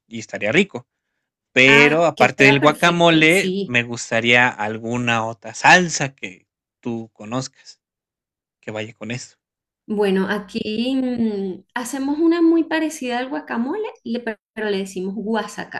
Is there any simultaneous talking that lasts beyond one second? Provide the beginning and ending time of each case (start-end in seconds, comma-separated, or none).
1.7-3.7